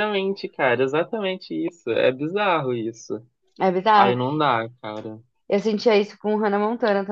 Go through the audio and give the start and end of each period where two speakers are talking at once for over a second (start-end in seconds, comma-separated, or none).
none